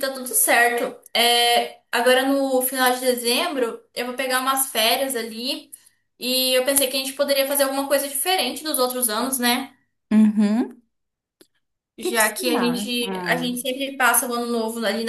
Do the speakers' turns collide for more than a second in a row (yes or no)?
yes